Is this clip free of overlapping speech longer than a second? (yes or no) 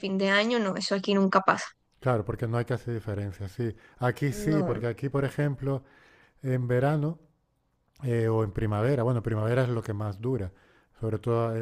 yes